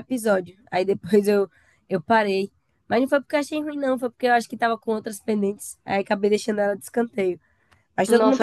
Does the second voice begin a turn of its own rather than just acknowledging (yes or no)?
yes